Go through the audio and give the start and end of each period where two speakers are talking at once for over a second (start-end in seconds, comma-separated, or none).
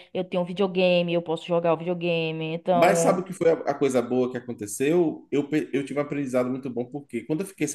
none